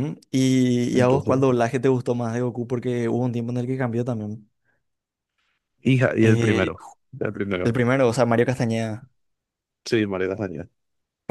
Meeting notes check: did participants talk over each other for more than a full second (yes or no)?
no